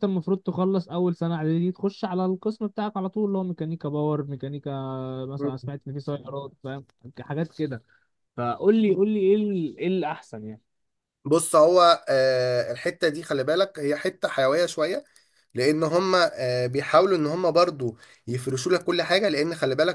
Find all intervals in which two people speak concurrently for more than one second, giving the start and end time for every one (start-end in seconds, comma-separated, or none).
none